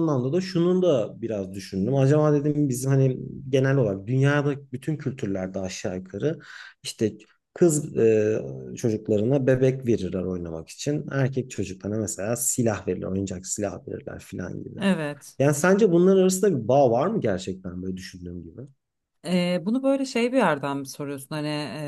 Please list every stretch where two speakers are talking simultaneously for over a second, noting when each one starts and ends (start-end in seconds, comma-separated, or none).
none